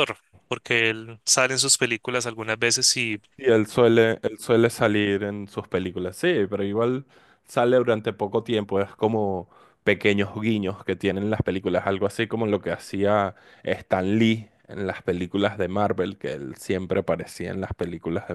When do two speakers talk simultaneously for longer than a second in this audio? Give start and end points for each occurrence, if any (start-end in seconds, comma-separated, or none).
none